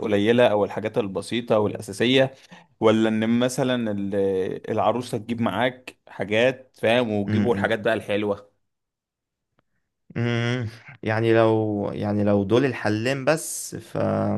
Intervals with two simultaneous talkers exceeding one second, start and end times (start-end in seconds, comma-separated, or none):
none